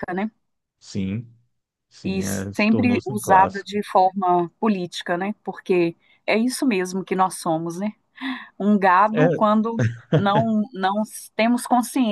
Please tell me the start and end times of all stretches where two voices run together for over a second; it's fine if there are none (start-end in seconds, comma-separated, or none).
2.0-3.8